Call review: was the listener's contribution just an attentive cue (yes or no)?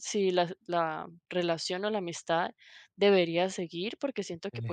yes